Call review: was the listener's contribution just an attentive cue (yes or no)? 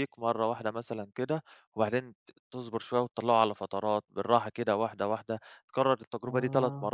yes